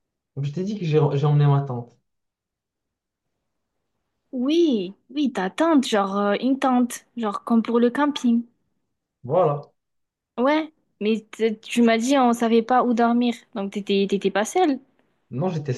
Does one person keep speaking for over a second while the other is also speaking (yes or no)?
no